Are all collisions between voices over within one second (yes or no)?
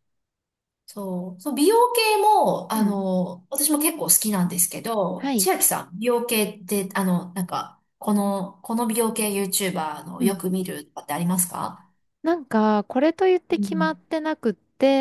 yes